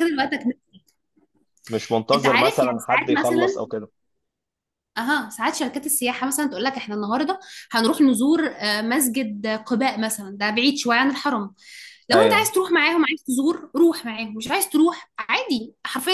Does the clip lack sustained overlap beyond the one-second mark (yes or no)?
no